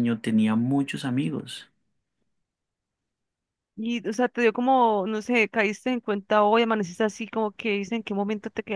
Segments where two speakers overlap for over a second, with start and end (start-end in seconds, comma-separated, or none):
none